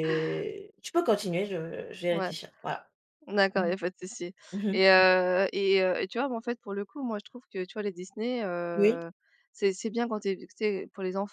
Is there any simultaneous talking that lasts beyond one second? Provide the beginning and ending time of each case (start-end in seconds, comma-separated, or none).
none